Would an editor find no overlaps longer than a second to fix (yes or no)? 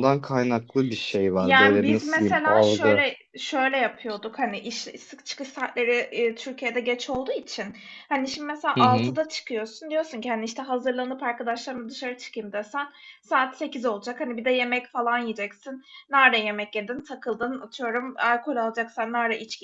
no